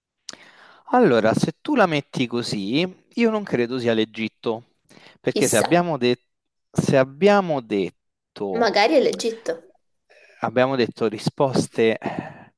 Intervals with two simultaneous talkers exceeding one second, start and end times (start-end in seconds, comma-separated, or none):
none